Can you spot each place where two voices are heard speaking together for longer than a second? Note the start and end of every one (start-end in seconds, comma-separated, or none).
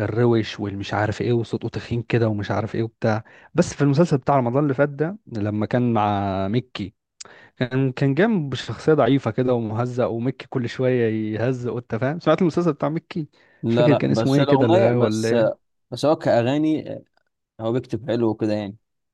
13.7-15.3